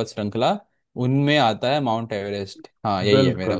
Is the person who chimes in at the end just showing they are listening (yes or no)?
no